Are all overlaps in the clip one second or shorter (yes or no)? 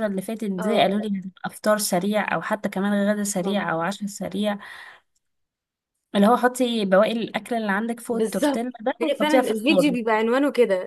no